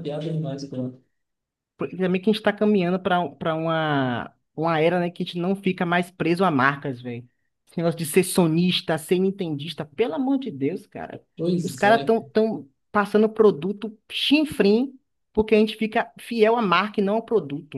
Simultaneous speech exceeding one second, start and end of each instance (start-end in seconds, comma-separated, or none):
none